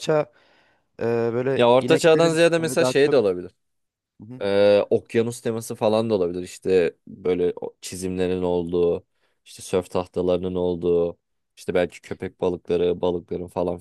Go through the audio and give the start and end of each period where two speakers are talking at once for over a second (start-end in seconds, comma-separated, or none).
1.6-3.2